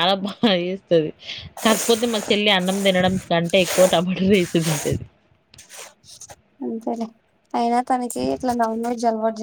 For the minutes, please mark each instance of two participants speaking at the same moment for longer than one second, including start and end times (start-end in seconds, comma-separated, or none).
none